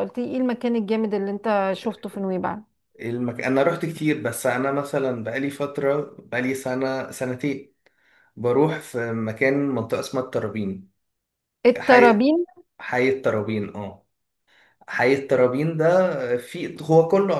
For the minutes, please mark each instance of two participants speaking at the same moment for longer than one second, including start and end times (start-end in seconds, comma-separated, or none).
none